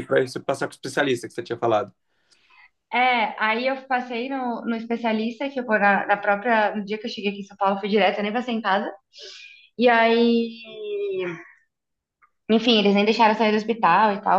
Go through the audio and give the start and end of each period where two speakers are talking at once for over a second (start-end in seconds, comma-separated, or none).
none